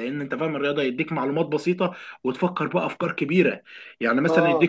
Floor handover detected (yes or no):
no